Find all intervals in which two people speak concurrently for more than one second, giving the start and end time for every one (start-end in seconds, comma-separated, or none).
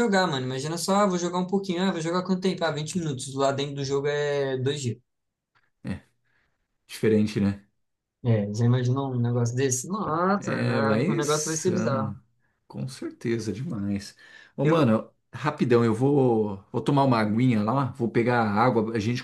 10.4-12.1